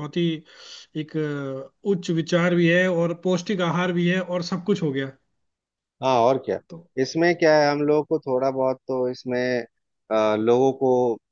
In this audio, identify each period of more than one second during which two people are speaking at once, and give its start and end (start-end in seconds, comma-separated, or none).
none